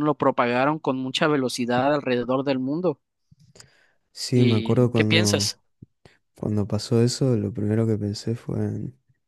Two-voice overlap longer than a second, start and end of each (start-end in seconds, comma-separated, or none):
4.3-5.6